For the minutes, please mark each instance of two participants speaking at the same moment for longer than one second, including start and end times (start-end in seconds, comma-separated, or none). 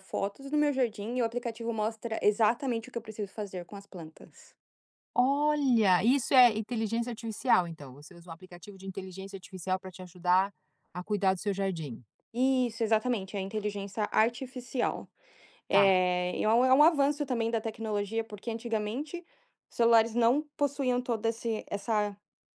none